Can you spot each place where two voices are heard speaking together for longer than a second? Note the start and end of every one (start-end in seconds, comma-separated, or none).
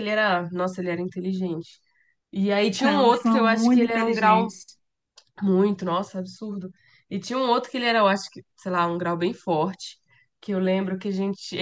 2.7-4.5